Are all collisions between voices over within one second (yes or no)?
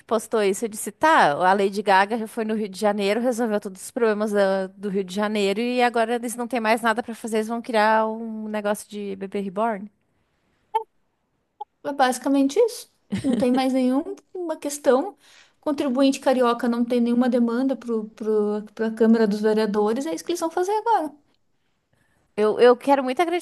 yes